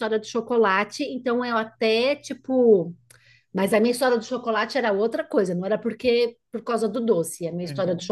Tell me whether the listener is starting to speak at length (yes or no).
no